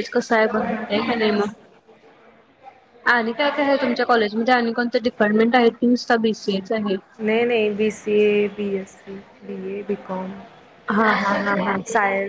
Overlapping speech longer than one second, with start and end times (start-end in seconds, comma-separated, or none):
none